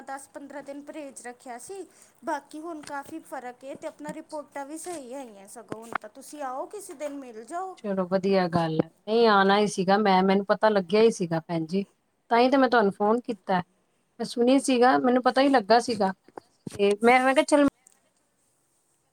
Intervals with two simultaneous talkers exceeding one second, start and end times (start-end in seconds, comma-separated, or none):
none